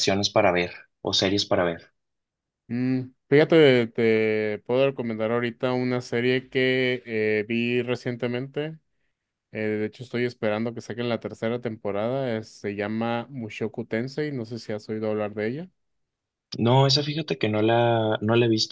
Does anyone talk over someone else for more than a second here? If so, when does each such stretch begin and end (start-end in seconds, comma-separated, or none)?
none